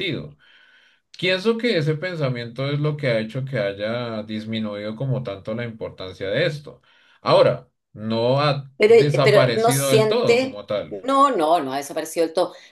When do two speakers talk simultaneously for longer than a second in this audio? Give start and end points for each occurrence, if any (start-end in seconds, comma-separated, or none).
8.8-11.0